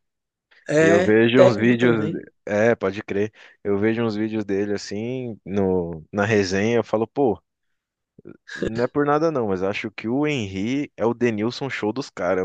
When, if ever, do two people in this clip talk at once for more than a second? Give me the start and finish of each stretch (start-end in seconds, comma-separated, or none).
0.8-2.2